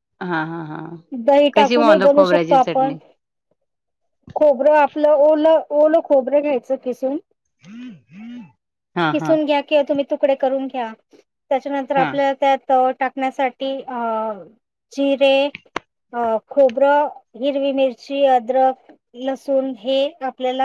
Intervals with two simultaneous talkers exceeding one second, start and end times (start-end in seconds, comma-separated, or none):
1.6-2.9